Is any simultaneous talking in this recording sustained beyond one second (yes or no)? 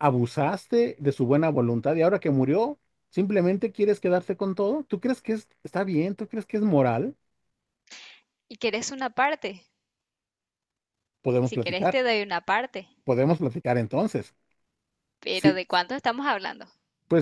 no